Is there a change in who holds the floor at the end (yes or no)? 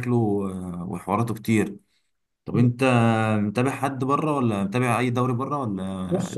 yes